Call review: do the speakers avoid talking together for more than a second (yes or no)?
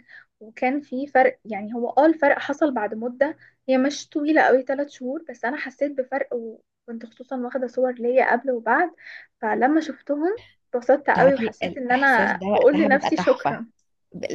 no